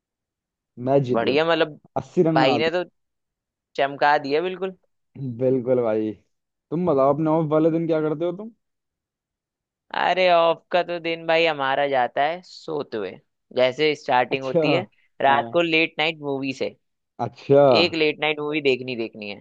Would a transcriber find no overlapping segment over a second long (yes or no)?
yes